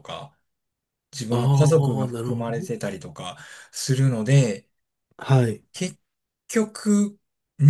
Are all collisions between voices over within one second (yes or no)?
no